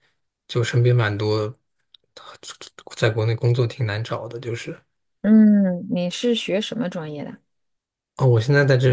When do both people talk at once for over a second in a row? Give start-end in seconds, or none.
none